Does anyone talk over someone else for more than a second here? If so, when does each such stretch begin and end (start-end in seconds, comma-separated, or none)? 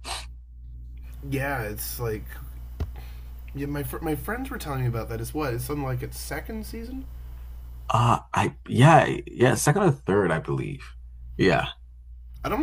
none